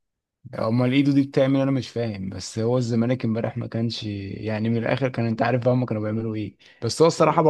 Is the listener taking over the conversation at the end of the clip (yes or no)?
no